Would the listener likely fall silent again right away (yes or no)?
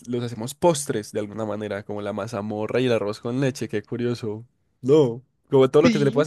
yes